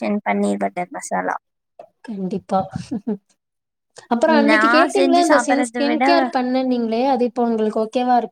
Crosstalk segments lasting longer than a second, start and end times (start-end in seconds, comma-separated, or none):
4.5-6.0